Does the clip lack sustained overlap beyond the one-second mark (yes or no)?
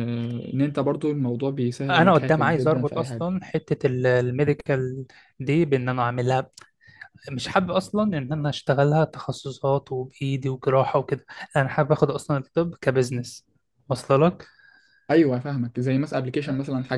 no